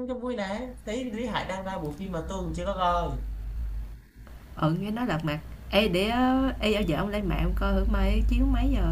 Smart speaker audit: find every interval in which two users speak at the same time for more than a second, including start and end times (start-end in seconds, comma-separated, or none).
none